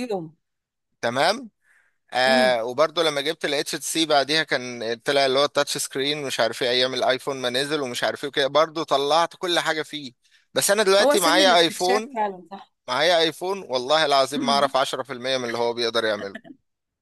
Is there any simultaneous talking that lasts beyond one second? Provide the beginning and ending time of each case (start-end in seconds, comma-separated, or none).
11.0-12.2